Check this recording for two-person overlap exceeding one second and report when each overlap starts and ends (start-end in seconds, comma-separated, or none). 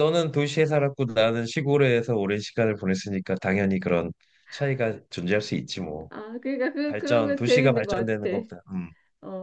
6.8-8.5